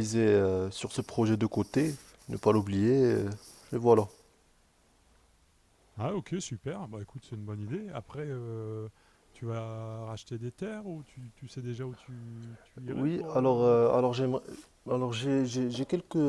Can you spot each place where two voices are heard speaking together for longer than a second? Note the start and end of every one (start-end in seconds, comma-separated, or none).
12.9-14.1